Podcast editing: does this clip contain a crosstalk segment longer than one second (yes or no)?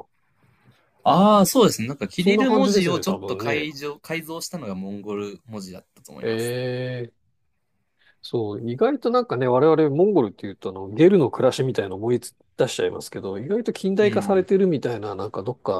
yes